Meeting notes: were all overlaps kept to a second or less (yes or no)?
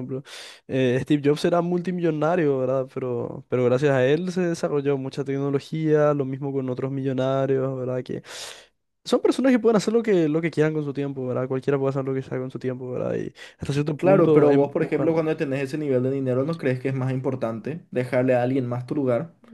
no